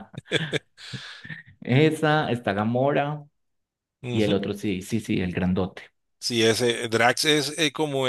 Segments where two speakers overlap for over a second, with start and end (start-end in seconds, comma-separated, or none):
none